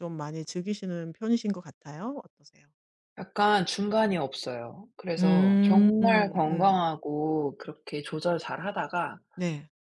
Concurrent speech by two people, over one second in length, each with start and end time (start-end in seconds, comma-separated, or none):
5.2-6.9